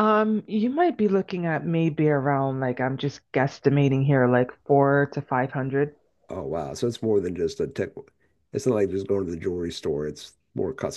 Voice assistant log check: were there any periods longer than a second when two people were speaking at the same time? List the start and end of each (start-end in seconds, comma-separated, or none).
none